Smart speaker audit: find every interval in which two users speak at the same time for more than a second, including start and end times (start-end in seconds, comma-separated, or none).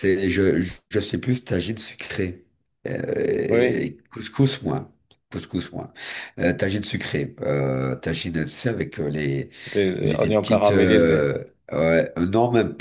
10.0-11.3